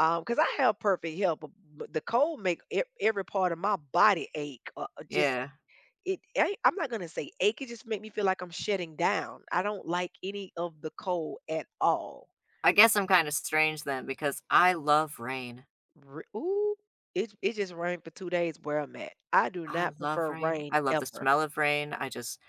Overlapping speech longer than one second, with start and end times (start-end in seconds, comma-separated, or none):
19.7-21.3